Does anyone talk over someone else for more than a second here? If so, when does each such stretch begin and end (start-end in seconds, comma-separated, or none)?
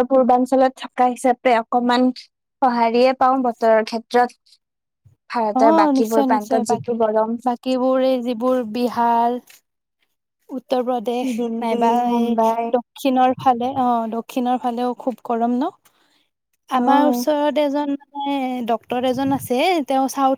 5.6-7.3